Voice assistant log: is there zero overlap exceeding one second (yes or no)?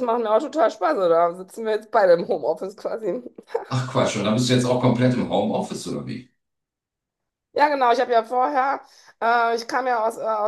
yes